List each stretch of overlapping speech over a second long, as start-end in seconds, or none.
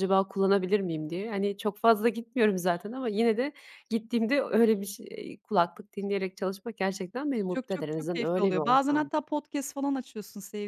7.5-9.1